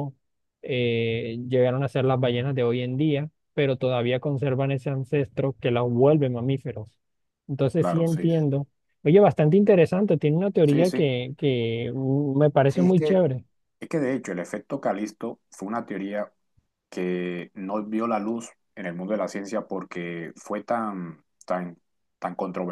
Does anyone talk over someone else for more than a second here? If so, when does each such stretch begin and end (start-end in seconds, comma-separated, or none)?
none